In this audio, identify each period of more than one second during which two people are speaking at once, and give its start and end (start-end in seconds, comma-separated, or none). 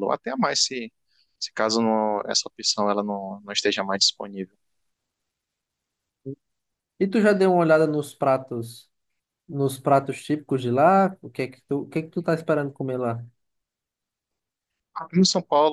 none